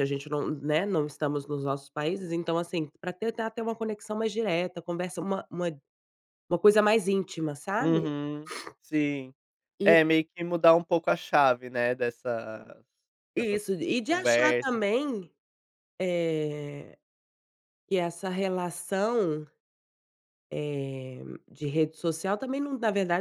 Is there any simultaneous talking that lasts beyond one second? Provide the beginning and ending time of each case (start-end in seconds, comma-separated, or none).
13.3-14.8